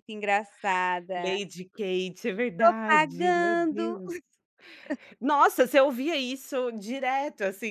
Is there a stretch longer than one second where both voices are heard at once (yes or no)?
yes